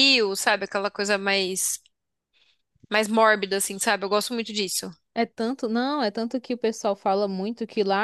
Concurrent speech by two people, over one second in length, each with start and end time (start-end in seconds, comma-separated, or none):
none